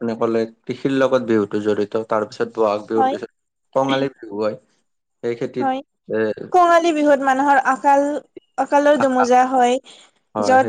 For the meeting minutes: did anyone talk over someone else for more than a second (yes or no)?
no